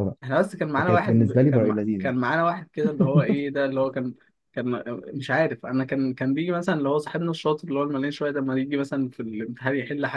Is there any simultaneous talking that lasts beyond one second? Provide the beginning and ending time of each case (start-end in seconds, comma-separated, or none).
0.8-2.1